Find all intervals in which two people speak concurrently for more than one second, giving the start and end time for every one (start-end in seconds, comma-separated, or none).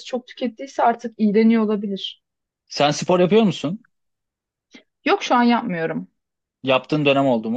none